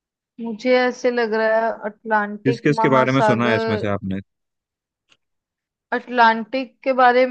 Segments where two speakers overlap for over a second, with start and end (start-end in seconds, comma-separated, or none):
2.5-3.9